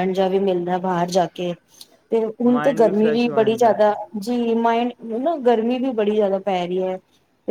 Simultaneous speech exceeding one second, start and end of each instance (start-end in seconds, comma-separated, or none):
2.5-4.0